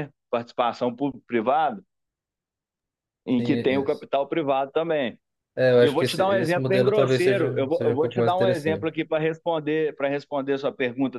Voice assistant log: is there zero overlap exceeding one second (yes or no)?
no